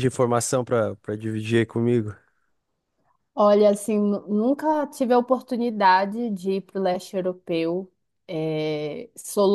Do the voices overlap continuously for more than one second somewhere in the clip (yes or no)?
no